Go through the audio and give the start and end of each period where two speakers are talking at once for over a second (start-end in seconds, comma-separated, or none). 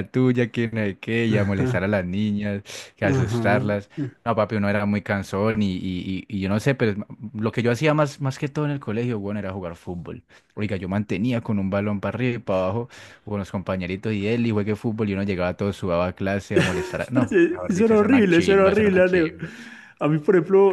17.1-19.3